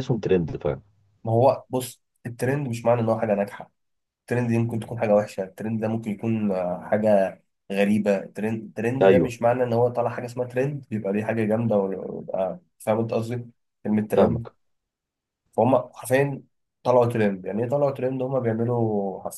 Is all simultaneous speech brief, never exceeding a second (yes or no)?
yes